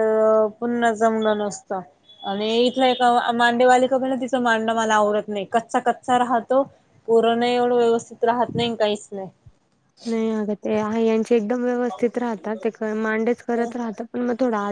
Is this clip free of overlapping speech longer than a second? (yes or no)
yes